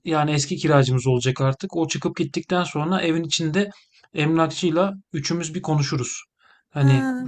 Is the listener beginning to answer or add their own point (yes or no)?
no